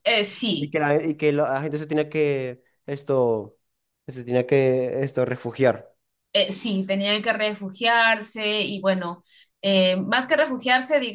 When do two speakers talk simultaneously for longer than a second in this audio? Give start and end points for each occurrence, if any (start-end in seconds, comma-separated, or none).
none